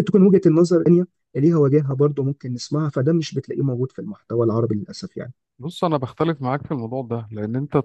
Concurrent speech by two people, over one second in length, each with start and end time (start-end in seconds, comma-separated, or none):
none